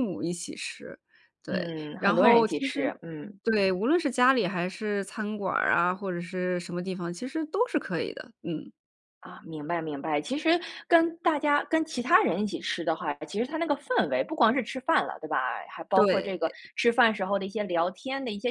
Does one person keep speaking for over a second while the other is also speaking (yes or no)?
yes